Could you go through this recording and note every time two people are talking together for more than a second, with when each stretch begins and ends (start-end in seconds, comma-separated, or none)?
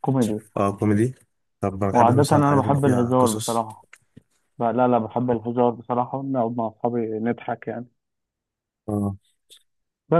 1.9-3.7